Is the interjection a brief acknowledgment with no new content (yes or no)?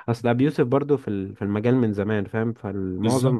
yes